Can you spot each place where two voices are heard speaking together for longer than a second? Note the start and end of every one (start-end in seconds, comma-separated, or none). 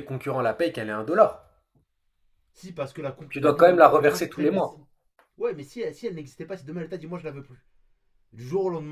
3.3-4.8